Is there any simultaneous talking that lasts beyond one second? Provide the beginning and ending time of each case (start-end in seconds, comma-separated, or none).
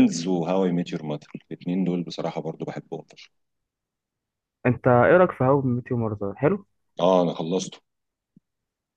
none